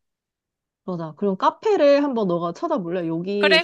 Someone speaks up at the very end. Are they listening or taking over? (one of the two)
taking over